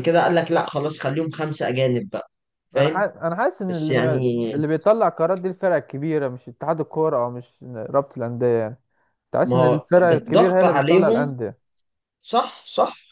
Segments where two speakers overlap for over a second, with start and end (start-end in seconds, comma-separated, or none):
9.4-11.3